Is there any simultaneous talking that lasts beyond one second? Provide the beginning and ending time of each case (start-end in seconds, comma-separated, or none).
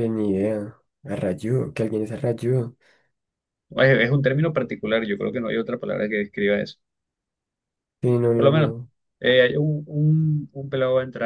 none